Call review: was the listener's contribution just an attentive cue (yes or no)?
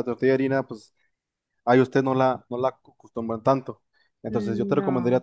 yes